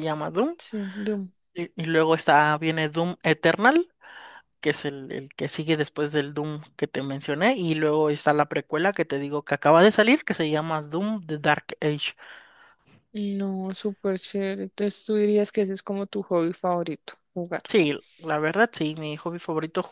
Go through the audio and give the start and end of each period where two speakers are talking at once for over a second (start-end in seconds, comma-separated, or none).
none